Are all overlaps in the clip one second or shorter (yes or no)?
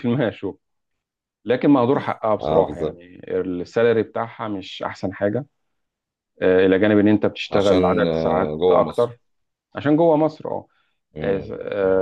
no